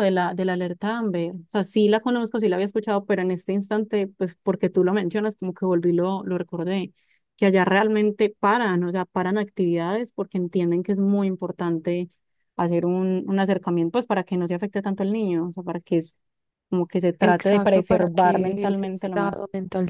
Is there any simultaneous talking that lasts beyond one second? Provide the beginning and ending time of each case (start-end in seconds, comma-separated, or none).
17.2-19.4